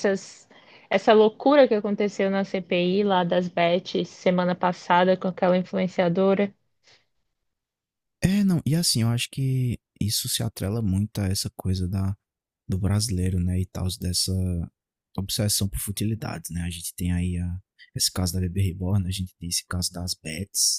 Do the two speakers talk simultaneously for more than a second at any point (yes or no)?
no